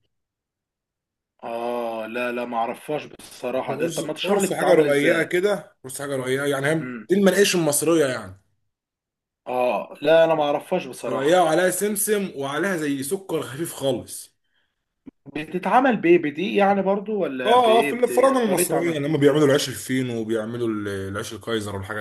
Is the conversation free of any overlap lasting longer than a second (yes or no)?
no